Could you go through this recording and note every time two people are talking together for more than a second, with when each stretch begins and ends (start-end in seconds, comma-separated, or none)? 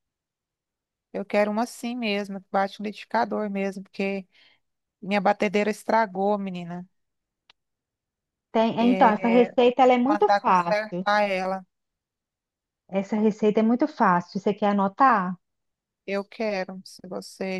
8.8-11.1